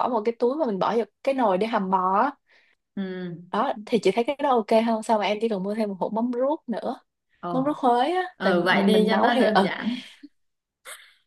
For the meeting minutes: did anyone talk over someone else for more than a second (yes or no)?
yes